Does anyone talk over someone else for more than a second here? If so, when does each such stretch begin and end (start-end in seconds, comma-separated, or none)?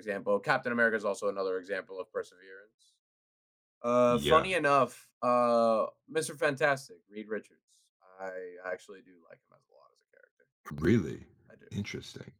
none